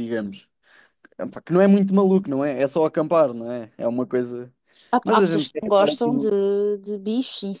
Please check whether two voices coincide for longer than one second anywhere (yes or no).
yes